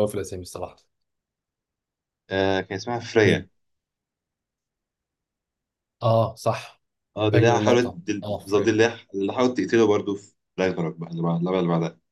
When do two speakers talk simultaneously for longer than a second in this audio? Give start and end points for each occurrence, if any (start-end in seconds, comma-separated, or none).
7.3-8.8